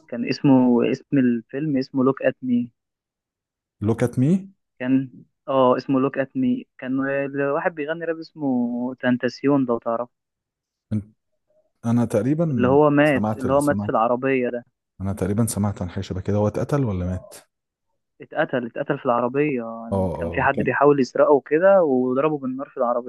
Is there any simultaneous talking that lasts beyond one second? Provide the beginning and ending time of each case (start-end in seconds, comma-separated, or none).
12.5-13.9